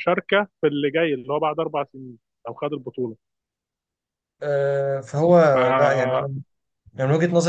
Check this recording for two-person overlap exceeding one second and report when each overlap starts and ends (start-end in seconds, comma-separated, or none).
none